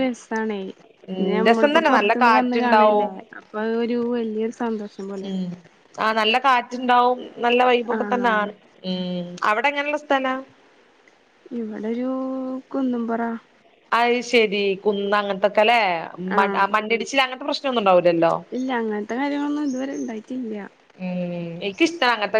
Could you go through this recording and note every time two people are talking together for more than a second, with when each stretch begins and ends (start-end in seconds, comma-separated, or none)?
1.2-3.1